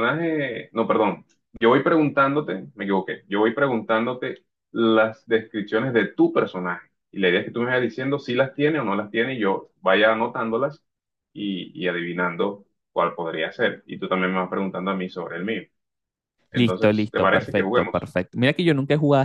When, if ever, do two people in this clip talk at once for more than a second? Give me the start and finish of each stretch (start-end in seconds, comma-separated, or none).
16.5-18.1